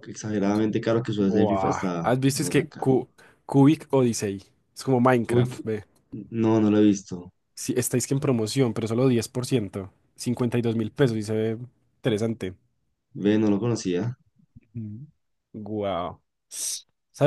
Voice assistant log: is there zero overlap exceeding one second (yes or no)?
no